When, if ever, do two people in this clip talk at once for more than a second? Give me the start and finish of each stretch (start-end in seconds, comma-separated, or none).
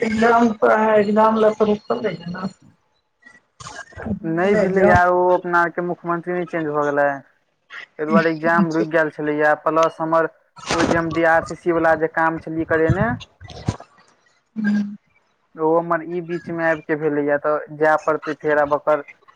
none